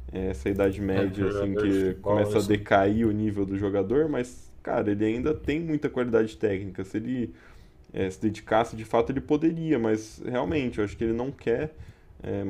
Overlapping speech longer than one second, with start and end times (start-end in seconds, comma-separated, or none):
0.9-2.7